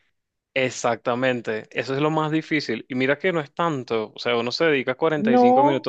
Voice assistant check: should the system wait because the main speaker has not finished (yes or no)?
yes